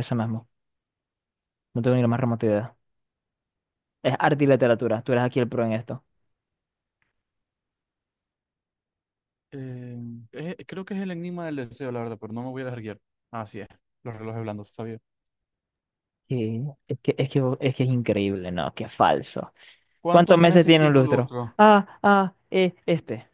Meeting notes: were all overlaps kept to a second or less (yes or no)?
no